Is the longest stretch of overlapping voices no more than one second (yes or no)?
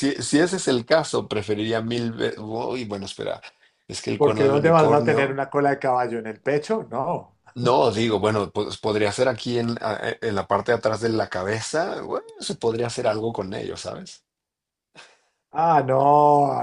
no